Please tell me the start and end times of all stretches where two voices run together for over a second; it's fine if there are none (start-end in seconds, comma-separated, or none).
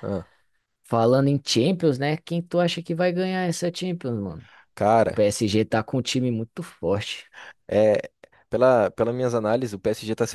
none